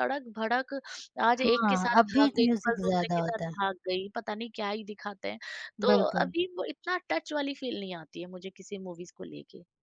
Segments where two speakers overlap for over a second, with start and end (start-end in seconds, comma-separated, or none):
1.4-3.5